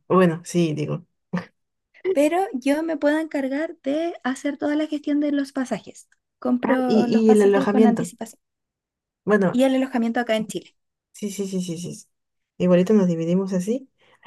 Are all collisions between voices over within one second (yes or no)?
no